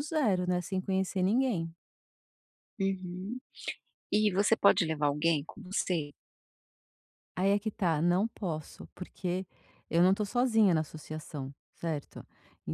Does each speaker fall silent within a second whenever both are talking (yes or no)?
yes